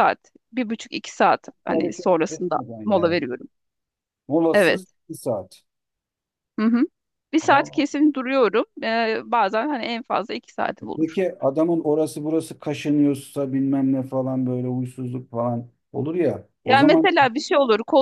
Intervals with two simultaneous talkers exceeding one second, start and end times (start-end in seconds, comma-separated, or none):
1.7-3.2